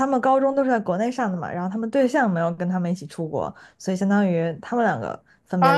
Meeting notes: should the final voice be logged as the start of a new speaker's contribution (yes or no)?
yes